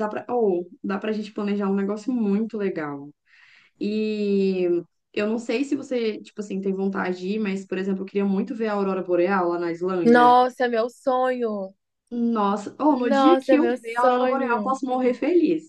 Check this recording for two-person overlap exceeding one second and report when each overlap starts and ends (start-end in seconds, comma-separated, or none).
12.9-14.8